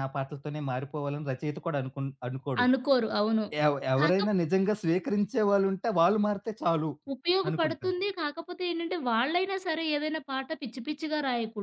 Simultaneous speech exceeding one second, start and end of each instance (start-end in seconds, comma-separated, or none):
none